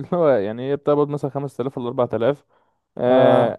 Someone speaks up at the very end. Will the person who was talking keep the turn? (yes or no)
yes